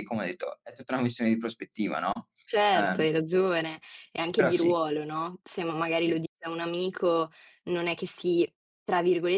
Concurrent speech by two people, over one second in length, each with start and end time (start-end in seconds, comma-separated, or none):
none